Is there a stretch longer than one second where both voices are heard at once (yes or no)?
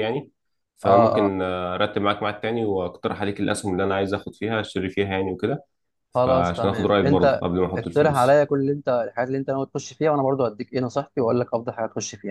yes